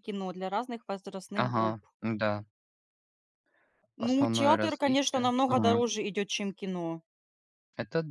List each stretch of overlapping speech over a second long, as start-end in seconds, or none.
4.0-5.8